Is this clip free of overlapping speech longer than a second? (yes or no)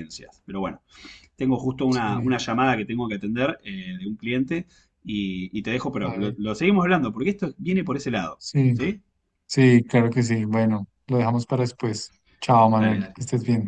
yes